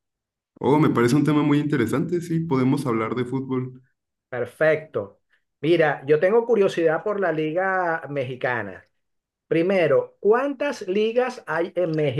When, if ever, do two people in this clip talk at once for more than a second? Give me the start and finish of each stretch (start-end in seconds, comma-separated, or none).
none